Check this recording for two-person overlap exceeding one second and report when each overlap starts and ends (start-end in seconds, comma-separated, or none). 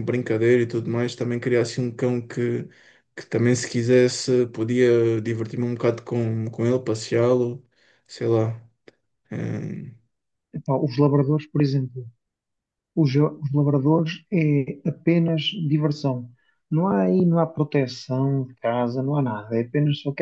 none